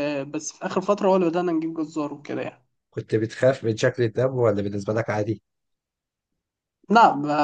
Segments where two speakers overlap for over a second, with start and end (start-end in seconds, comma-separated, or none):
none